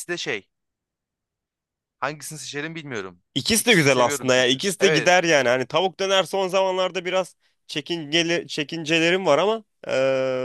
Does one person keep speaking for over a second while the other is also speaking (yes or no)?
yes